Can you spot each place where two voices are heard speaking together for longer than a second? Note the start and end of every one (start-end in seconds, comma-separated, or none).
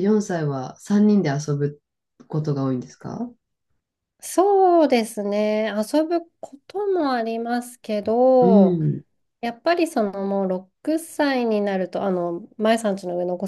none